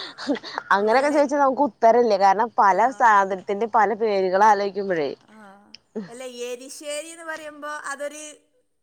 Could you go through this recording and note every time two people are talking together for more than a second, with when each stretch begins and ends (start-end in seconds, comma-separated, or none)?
none